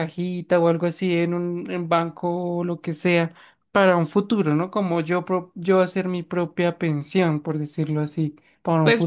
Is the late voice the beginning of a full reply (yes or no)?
yes